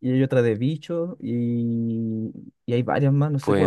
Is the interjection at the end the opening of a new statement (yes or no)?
yes